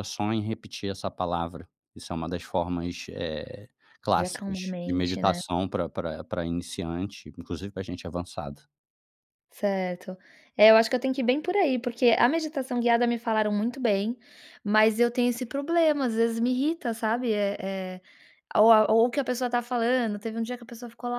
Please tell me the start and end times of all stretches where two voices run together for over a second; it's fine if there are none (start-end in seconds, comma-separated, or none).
4.1-5.4